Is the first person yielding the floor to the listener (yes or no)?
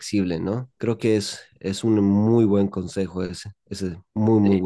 yes